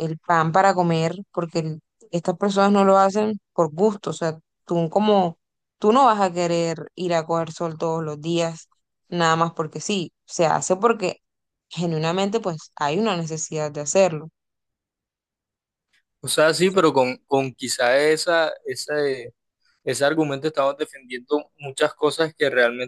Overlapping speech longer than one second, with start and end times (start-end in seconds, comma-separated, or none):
none